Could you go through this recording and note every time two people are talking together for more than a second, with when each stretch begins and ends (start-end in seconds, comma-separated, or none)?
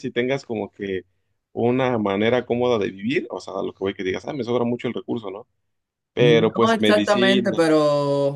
6.2-7.6